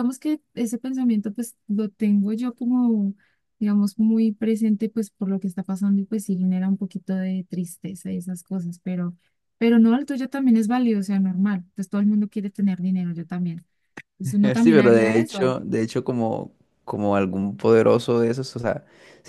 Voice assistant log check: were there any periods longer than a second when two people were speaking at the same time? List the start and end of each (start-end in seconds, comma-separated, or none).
14.2-15.6